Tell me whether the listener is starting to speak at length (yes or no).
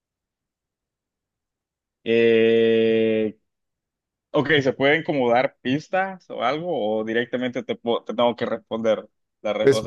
yes